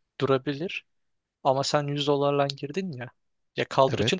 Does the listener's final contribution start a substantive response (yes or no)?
no